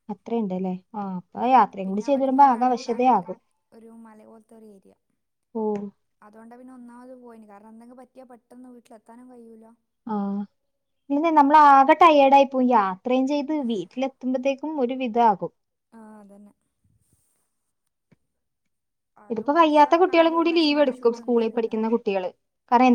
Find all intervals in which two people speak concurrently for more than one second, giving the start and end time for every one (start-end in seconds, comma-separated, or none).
1.9-3.2, 19.3-21.9